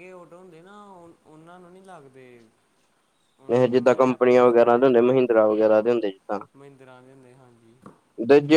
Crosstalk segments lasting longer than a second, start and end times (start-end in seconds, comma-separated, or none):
3.5-4.8